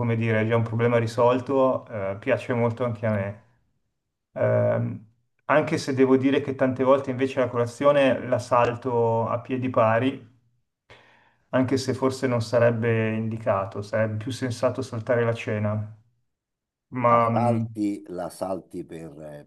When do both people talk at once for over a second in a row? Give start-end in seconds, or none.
none